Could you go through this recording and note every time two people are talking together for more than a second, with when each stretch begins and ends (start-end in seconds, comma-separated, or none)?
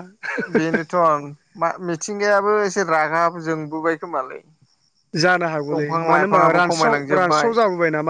5.7-7.5